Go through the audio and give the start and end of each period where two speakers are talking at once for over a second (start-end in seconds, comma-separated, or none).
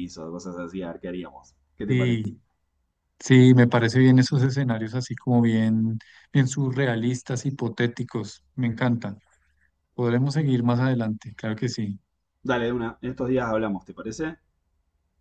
none